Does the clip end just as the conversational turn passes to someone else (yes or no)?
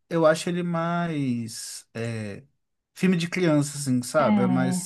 no